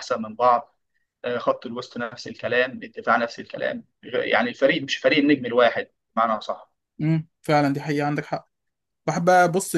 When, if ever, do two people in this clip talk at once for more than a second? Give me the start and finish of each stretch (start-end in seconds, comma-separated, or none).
none